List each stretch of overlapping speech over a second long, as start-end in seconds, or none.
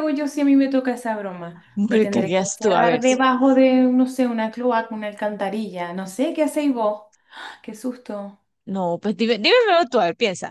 1.8-3.0